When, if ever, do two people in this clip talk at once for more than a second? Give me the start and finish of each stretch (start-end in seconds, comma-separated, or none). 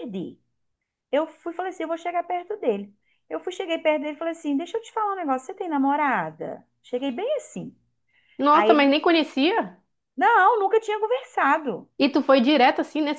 none